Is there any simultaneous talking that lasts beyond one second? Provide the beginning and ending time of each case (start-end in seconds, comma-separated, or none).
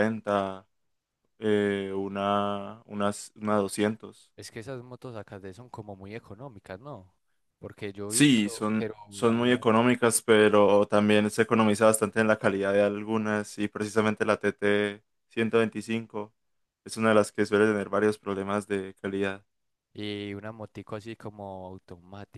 8.1-9.7